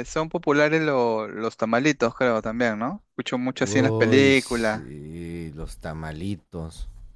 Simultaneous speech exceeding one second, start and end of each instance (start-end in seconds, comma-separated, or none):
3.6-4.8